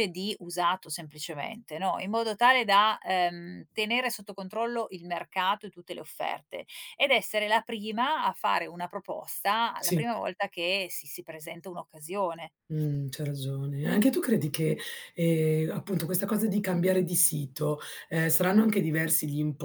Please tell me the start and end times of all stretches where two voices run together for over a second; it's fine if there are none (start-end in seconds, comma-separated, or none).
none